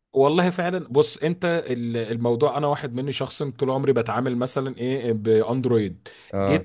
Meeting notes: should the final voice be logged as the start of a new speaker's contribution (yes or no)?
no